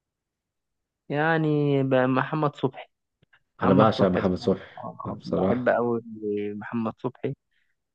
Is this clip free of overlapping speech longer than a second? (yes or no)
no